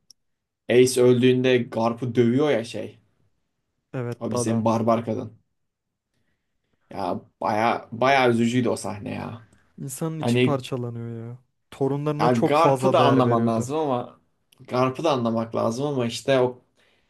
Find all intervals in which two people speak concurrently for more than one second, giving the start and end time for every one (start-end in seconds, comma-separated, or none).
12.2-13.7